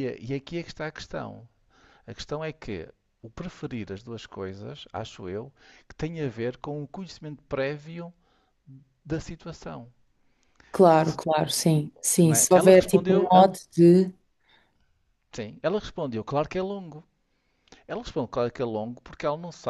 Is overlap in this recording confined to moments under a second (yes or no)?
no